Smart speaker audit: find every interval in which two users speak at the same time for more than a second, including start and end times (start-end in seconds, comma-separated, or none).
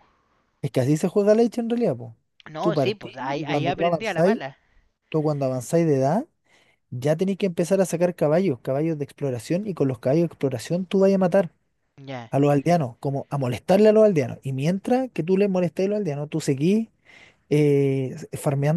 2.6-4.4